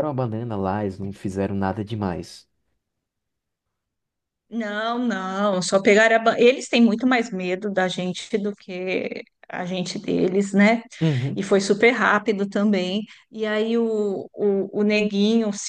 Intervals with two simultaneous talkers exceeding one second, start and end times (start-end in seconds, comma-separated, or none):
none